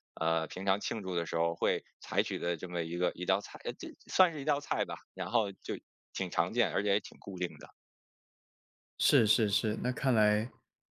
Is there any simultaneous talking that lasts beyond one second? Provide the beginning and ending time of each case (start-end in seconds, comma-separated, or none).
none